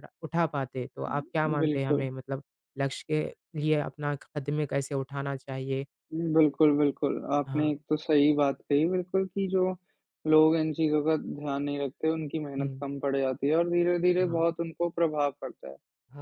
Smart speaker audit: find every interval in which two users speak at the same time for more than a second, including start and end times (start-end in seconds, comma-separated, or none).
none